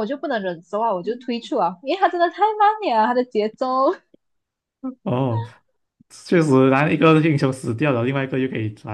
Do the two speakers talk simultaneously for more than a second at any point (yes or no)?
no